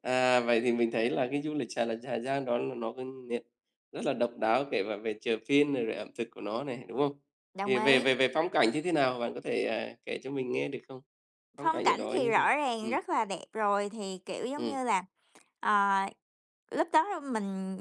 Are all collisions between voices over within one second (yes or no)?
no